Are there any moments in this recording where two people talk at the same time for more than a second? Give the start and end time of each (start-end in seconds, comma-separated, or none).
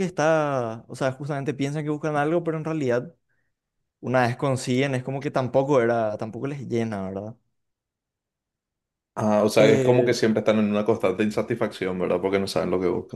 none